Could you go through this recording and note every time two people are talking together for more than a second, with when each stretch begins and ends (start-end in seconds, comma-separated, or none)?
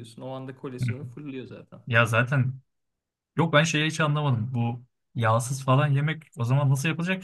none